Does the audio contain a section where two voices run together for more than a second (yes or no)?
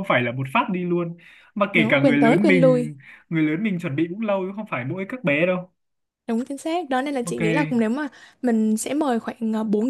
yes